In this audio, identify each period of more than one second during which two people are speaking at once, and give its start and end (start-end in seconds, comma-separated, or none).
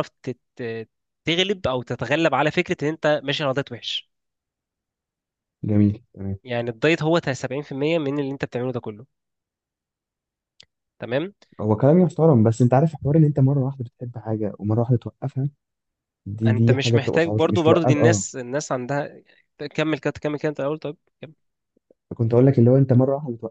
16.5-18.2